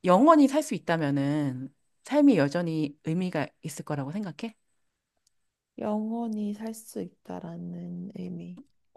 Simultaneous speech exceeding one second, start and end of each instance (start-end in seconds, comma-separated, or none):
none